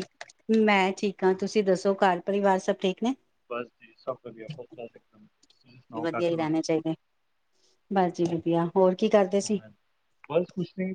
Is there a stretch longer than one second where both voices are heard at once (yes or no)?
no